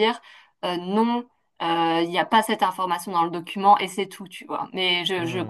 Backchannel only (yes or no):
yes